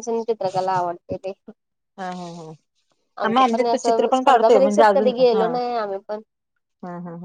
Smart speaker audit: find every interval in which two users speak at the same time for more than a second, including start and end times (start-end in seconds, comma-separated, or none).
3.2-5.5